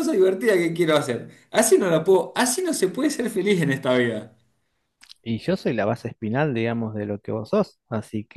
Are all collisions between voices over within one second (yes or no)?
yes